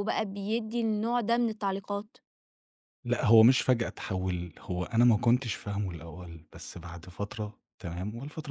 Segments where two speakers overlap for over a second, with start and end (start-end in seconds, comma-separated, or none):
none